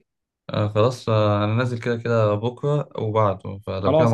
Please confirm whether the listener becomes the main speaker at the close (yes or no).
yes